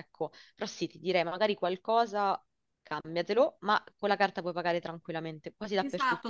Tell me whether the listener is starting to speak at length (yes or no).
yes